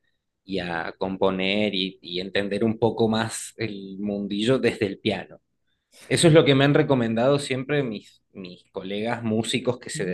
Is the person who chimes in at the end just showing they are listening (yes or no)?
no